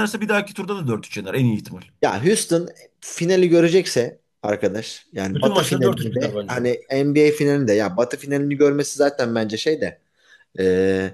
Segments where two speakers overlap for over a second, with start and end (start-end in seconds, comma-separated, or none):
5.3-6.6